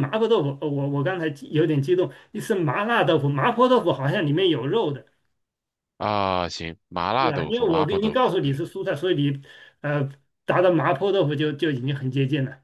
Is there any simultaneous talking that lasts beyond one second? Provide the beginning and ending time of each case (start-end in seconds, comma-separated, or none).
7.2-8.6